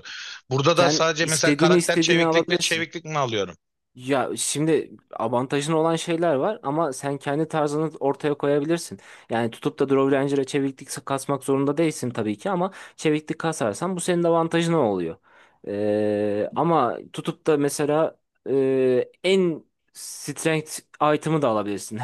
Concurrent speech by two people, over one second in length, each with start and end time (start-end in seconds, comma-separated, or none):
0.7-2.8